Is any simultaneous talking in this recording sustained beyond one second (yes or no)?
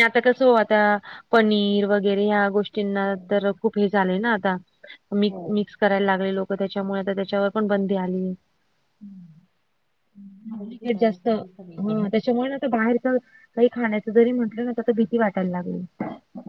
yes